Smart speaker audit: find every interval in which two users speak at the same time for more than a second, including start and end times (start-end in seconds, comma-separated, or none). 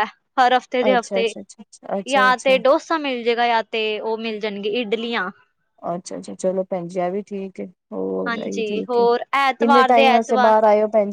8.3-10.5